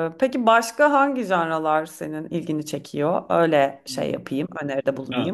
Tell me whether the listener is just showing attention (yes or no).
no